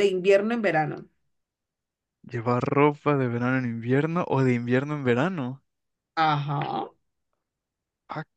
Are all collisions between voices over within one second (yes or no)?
yes